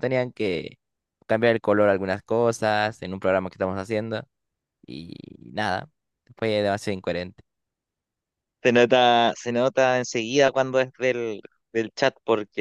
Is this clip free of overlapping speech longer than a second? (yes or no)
yes